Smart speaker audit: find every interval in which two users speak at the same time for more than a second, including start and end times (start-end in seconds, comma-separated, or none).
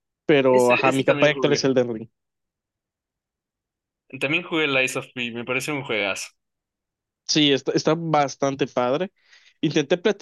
0.5-1.7